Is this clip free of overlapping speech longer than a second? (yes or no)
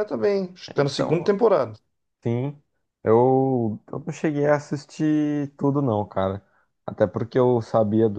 yes